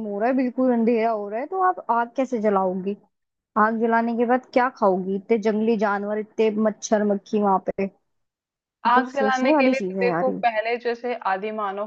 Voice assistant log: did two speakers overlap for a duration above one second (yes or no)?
yes